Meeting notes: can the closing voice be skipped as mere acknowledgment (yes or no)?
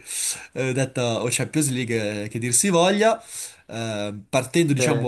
yes